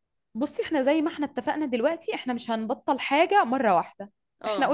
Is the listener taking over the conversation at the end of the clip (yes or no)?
no